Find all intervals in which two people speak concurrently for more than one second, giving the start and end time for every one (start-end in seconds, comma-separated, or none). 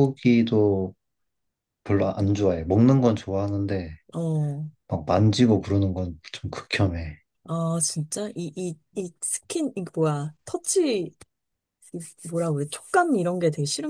none